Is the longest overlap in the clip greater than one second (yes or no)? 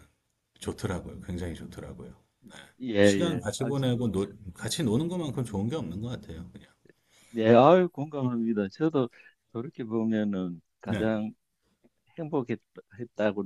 yes